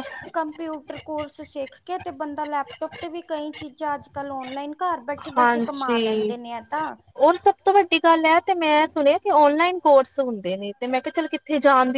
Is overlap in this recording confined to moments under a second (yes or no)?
yes